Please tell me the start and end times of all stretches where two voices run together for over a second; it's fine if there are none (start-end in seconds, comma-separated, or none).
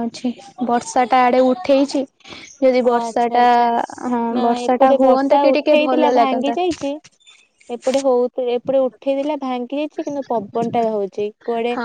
4.3-6.6